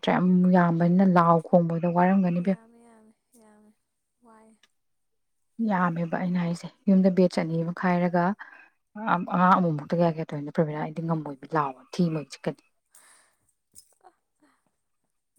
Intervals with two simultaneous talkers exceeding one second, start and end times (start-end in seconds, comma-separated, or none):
none